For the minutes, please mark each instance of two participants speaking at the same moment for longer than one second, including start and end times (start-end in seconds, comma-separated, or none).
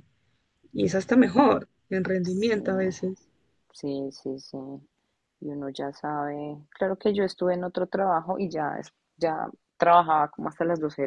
none